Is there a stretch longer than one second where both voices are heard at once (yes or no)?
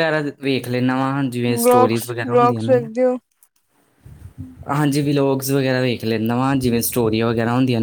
yes